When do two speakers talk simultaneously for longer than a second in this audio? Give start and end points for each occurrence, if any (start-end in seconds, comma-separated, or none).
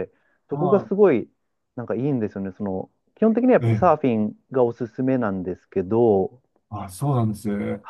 none